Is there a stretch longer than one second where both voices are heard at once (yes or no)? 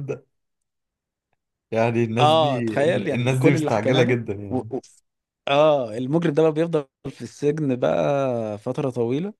yes